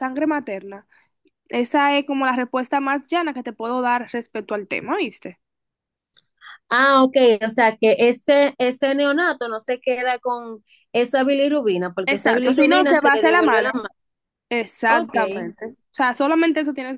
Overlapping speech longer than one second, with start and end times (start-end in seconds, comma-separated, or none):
12.1-13.7